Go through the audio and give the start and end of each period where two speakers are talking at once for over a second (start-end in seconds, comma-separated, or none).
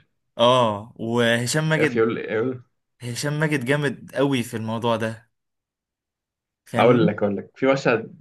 none